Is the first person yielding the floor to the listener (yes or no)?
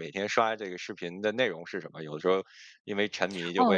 yes